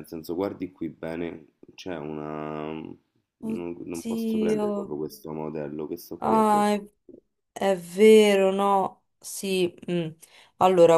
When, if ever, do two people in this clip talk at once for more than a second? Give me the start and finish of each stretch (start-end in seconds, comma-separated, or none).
3.5-5.0